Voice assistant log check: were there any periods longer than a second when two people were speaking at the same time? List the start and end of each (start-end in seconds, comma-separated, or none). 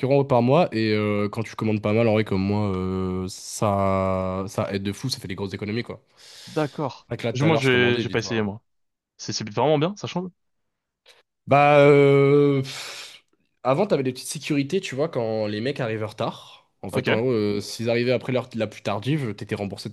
6.5-8.5